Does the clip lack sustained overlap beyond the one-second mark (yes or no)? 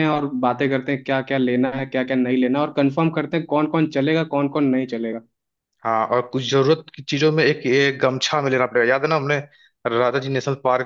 yes